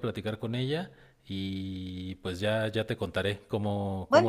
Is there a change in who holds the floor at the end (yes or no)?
yes